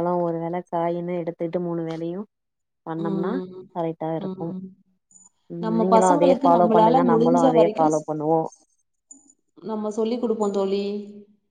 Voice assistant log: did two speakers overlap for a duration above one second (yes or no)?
yes